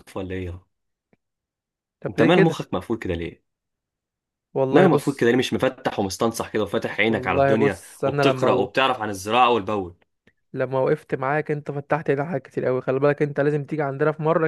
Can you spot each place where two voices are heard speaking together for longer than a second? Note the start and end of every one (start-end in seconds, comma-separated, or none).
7.1-8.5